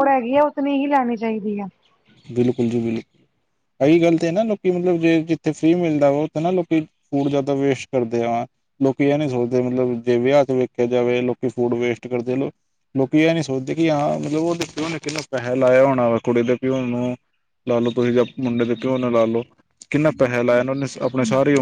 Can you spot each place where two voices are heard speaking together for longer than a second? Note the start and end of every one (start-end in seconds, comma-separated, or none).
none